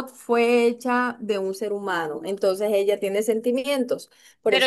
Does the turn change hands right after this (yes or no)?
yes